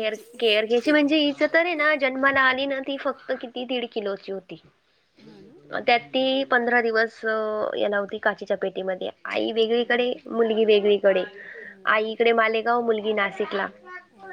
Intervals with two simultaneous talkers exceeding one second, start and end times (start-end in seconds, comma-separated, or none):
none